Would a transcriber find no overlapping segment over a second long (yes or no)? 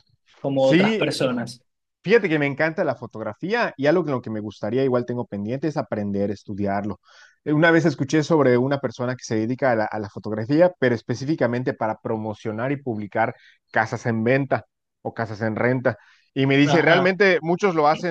yes